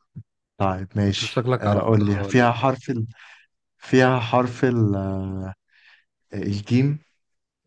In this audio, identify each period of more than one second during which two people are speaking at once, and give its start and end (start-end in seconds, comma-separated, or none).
1.1-2.7